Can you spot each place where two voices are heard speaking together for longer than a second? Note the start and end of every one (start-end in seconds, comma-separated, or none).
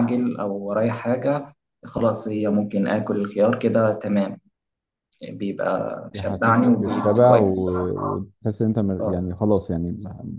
6.1-7.5